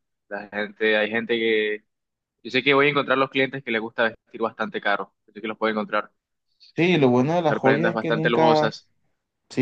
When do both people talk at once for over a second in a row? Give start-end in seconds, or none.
7.5-8.7